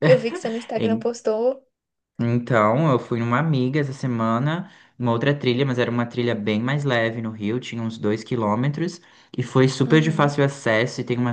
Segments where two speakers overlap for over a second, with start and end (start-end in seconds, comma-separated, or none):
none